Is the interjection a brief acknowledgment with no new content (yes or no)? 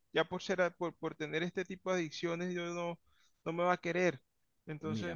no